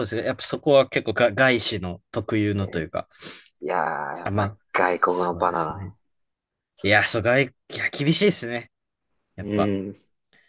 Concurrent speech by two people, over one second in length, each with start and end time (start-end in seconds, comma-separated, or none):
4.2-5.9